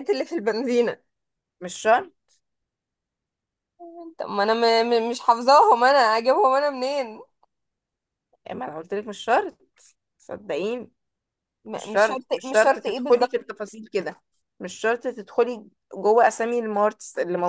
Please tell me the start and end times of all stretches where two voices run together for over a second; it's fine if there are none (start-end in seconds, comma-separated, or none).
11.7-13.4